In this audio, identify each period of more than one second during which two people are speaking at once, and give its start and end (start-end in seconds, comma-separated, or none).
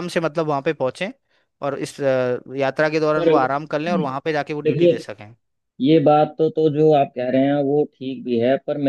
none